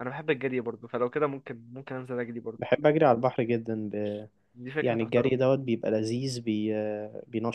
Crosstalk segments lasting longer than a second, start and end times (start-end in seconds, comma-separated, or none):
none